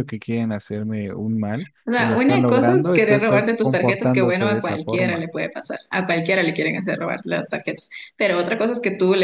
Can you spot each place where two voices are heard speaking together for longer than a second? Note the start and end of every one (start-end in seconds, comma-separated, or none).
1.8-5.3